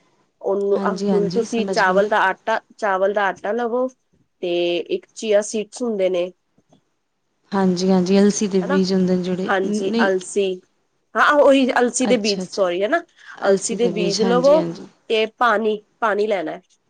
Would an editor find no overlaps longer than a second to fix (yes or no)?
no